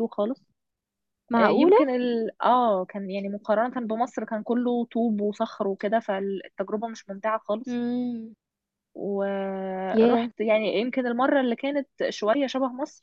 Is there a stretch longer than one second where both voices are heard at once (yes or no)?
no